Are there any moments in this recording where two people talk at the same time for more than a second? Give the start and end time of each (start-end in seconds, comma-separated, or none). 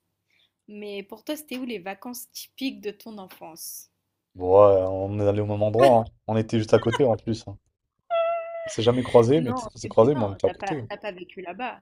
9.3-10.9